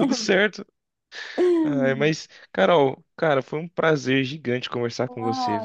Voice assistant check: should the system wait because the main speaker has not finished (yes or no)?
no